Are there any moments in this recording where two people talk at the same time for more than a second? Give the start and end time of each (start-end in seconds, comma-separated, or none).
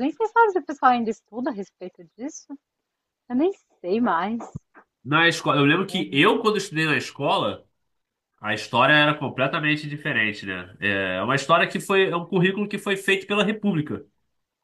none